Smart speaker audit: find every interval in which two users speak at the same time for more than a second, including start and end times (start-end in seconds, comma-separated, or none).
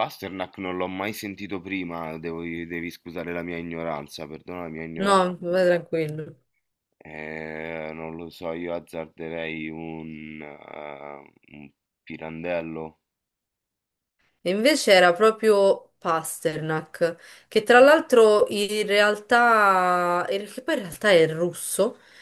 none